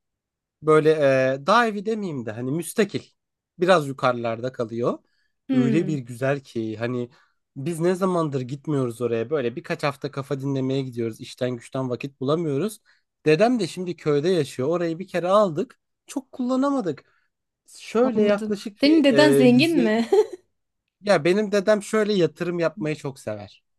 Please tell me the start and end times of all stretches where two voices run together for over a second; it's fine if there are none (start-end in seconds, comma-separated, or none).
18.0-19.9